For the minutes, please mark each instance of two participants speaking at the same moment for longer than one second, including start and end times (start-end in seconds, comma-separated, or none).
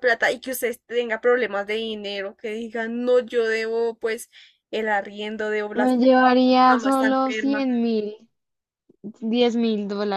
5.8-7.7